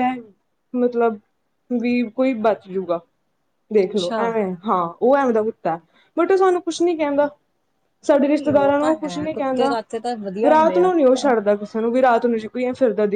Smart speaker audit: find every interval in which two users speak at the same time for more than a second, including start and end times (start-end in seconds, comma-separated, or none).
8.2-9.8